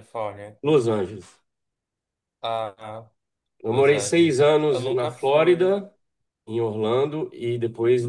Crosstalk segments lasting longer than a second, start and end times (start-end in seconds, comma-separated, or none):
3.7-5.8